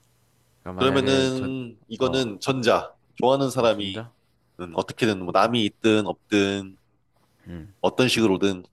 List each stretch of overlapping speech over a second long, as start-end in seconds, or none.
0.8-2.2